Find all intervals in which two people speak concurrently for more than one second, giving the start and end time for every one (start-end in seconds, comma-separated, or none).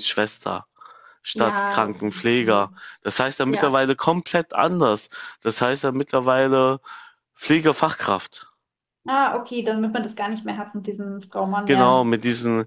1.3-2.7